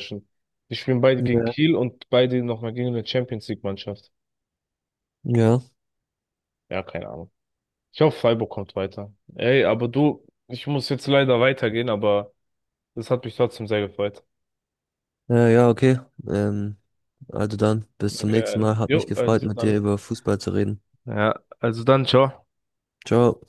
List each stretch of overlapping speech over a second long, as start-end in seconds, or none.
18.2-19.8